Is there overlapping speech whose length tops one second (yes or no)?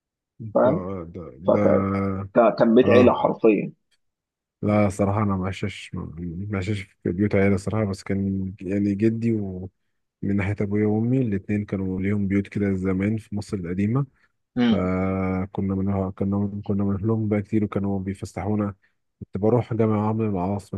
no